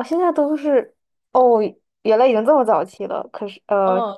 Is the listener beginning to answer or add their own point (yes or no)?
yes